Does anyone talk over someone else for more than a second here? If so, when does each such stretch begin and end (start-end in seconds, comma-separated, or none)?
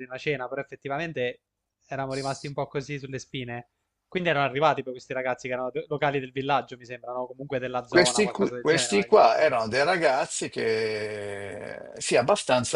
7.9-9.5